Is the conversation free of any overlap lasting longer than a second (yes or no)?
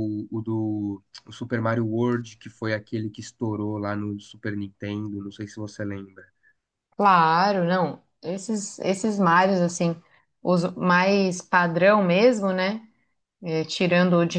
yes